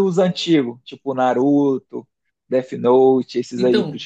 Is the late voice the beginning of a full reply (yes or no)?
yes